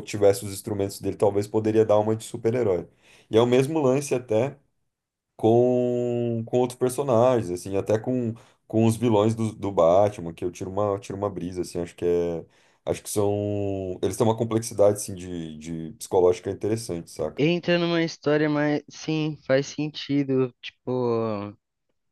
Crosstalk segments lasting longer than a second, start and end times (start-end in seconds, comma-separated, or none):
none